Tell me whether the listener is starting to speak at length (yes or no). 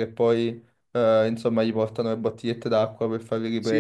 no